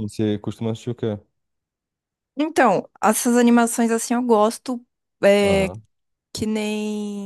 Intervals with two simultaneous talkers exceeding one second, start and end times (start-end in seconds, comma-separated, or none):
none